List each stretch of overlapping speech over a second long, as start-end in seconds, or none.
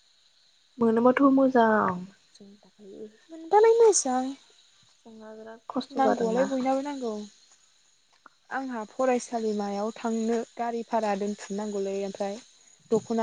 none